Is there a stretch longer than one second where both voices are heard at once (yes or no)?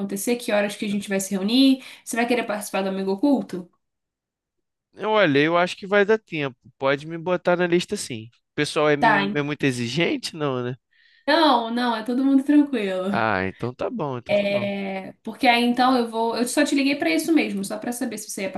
no